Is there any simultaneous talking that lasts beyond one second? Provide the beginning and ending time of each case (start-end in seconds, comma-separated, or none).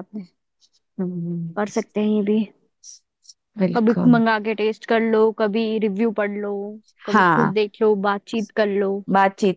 none